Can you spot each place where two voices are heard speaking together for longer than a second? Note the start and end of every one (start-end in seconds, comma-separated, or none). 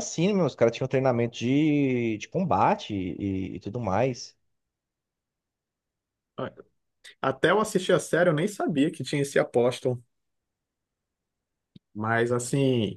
none